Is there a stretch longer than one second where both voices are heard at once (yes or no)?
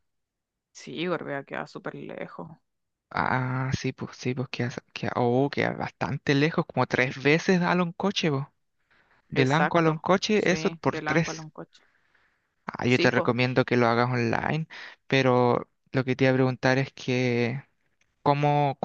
yes